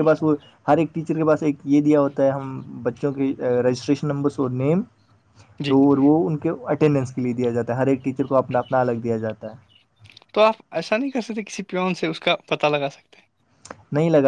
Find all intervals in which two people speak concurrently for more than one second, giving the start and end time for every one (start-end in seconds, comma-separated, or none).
none